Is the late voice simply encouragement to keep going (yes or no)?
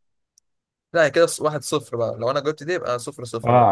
no